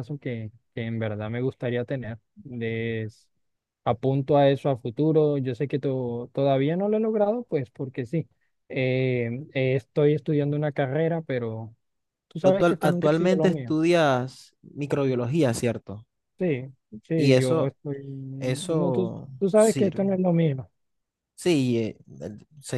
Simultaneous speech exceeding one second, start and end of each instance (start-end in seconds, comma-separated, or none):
12.4-13.7, 18.4-20.2